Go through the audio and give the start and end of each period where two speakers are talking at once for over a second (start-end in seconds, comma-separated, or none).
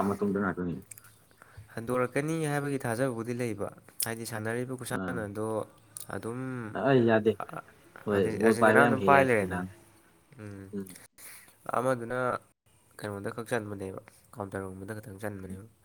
8.1-9.6